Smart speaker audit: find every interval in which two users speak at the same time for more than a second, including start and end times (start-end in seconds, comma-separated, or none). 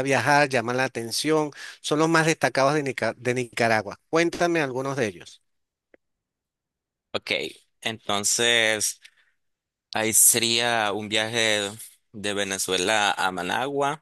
none